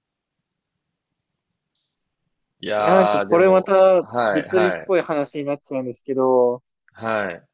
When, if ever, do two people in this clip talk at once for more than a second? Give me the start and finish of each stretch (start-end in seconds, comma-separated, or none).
2.8-4.9